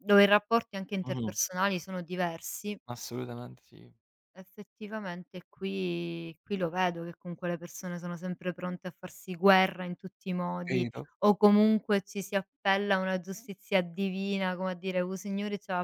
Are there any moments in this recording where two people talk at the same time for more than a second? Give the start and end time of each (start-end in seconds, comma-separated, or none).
none